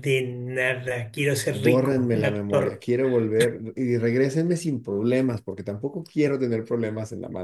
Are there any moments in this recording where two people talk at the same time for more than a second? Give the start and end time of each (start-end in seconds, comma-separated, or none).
1.6-2.8